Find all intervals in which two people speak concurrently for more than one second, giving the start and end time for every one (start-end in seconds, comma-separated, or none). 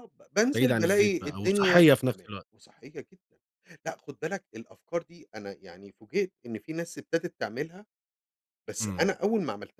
0.5-2.5